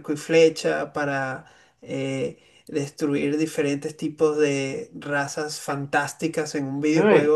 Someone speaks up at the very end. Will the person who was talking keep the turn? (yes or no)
yes